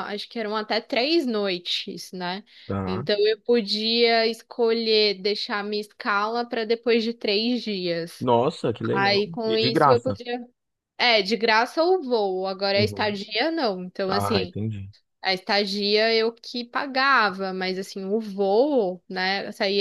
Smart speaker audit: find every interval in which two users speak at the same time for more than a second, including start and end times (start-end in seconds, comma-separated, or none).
8.9-10.2